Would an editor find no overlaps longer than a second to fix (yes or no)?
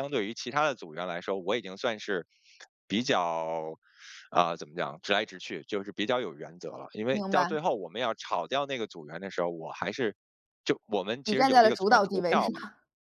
no